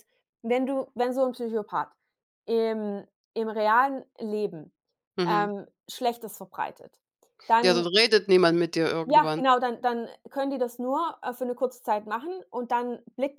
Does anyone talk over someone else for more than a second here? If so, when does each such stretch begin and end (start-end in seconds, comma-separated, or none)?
none